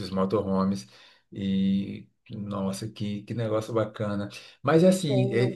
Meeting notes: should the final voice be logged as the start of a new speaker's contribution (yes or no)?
no